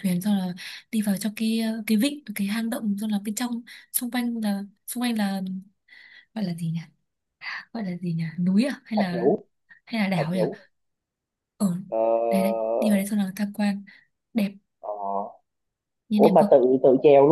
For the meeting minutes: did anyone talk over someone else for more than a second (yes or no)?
no